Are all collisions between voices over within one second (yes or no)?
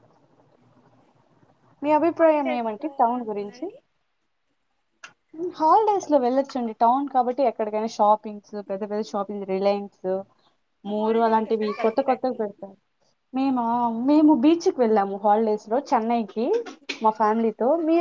no